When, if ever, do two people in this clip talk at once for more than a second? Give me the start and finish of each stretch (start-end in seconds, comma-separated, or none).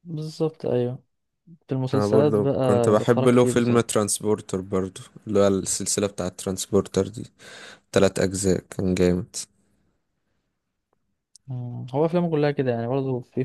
1.9-4.0